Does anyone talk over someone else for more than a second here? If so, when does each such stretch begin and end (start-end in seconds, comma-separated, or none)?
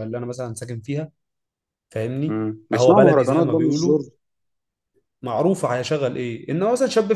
2.3-3.9